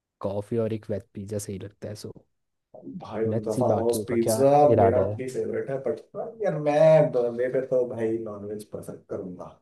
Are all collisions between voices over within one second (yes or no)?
no